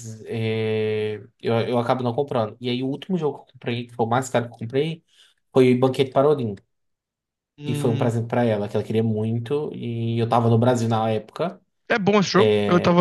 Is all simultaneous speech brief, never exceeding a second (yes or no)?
yes